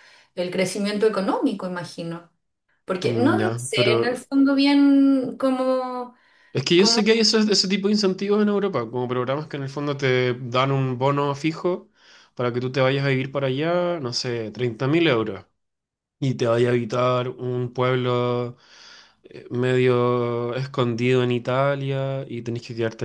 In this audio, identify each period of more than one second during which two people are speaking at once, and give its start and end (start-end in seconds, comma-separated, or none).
3.0-4.2